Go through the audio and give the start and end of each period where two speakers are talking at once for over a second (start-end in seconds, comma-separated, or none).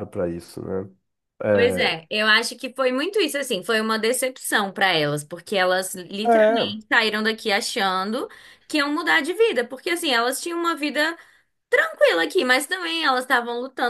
none